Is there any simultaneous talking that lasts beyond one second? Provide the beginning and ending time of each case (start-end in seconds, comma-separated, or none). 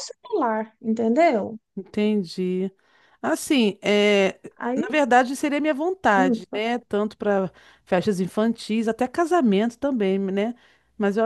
none